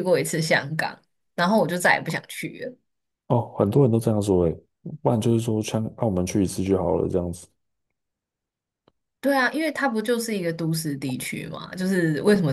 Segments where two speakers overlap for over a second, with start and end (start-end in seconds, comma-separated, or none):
none